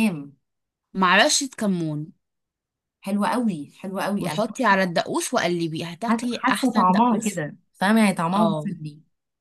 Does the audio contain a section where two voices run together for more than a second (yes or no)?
yes